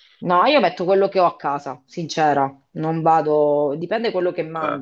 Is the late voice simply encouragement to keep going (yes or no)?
yes